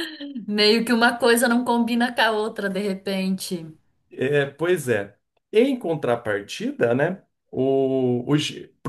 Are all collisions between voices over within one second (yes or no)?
yes